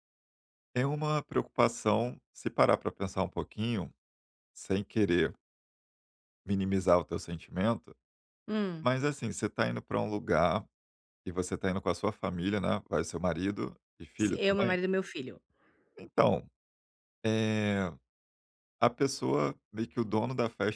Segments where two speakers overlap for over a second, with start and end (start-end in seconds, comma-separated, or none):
none